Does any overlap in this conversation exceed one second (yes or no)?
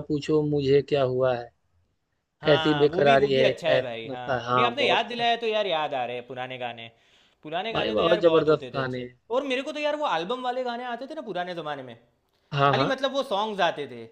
yes